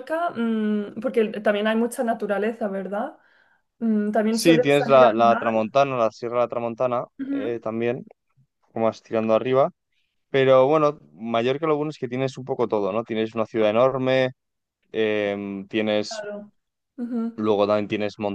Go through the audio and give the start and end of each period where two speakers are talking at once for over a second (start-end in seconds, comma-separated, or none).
4.3-5.6